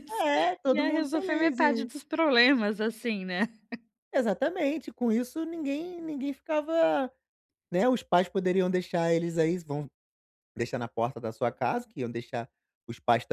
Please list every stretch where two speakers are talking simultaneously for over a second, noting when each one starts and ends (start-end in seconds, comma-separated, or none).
0.7-1.9